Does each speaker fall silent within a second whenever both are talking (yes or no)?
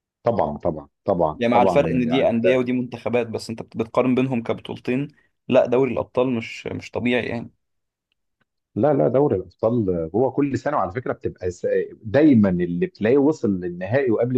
no